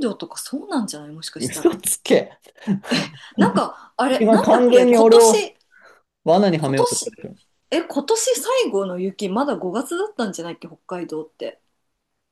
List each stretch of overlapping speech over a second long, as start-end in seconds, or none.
4.2-5.5